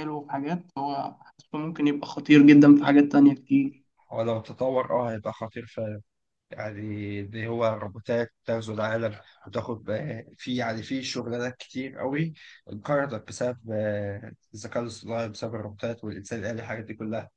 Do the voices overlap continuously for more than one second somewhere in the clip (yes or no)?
no